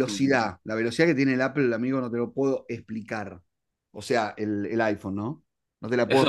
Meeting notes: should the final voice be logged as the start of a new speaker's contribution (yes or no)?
yes